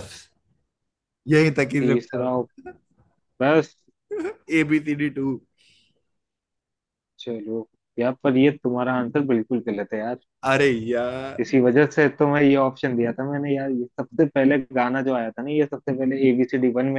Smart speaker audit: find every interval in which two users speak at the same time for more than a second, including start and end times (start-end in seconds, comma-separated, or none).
none